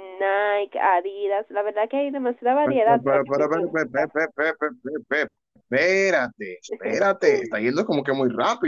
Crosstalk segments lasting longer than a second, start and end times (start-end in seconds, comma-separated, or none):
2.6-4.1